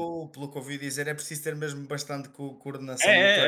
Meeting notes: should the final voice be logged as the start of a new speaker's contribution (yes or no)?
yes